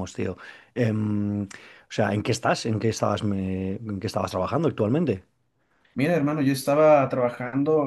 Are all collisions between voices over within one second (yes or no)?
yes